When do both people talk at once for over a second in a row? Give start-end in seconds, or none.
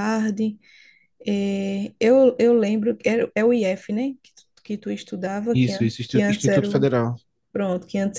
5.5-6.9